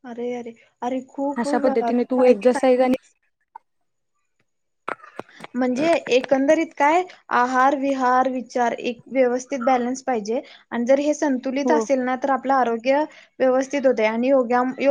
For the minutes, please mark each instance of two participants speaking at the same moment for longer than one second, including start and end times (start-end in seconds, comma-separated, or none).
1.6-2.9